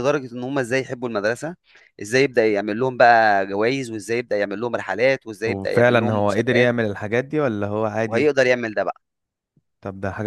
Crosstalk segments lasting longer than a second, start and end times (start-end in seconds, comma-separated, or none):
5.5-6.7